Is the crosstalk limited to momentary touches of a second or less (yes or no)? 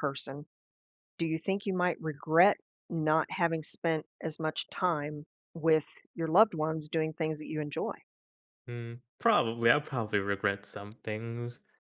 yes